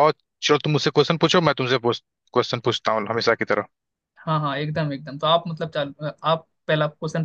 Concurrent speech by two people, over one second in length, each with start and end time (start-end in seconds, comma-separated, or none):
none